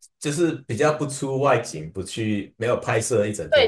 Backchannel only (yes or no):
no